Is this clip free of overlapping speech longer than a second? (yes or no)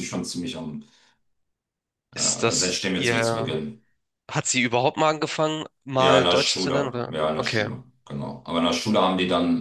no